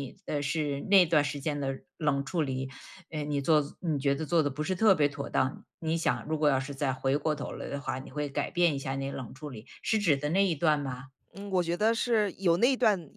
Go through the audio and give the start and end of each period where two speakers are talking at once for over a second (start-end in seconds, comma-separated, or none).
none